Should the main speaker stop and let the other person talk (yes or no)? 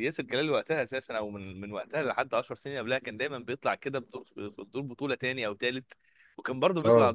no